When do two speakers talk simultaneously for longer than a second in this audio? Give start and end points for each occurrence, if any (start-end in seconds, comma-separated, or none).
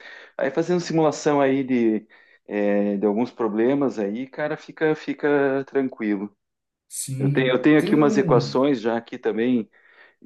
7.2-8.7